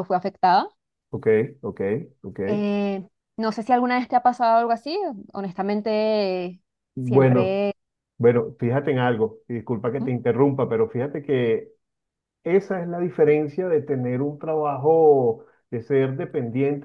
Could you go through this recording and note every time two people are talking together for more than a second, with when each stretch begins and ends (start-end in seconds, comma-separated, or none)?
none